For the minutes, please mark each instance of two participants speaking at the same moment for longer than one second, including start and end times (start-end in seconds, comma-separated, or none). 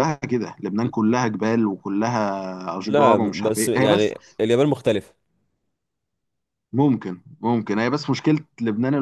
2.9-4.1